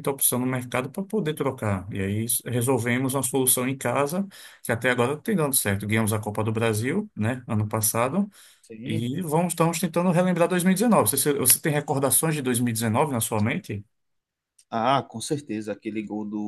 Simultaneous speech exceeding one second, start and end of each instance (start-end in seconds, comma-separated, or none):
none